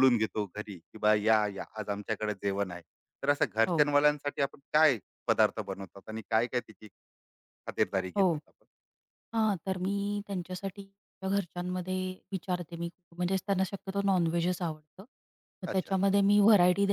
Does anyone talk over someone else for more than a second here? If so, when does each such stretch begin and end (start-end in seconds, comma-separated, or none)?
none